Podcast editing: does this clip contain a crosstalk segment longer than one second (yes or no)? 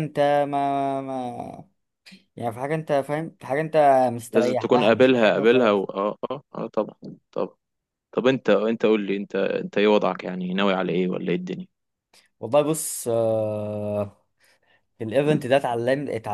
yes